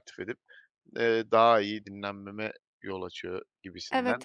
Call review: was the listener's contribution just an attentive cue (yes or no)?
no